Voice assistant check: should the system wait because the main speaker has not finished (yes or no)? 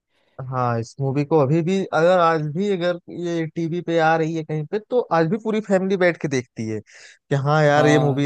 yes